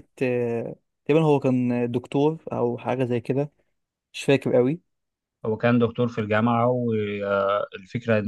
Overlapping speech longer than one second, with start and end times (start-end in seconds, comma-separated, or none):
none